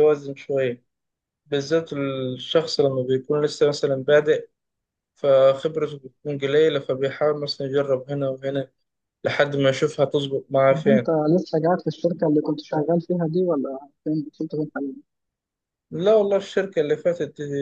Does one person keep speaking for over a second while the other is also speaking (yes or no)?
no